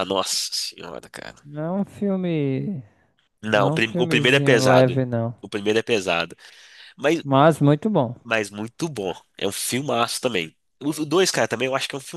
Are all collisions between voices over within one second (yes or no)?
no